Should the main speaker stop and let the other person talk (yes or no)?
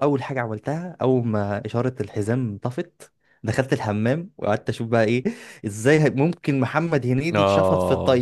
no